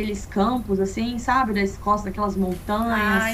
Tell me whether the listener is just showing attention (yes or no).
no